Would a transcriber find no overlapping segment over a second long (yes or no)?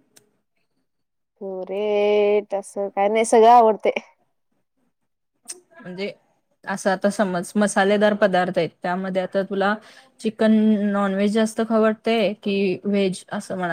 yes